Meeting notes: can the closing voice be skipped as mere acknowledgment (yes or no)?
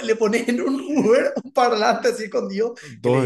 no